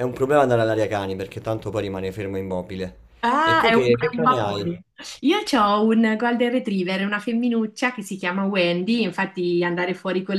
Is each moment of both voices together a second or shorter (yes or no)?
no